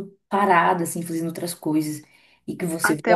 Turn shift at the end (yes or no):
yes